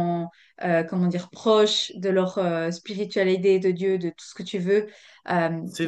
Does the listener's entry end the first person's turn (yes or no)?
no